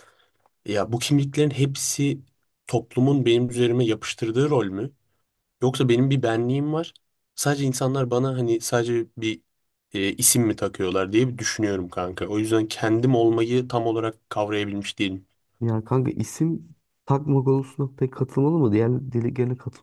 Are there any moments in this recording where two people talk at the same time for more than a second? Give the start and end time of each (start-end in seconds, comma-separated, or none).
none